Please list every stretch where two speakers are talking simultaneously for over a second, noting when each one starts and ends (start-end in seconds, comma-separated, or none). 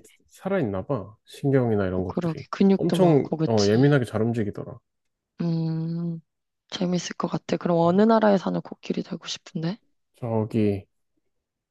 1.9-3.9